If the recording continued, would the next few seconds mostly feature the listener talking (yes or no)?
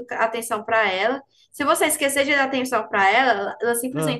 no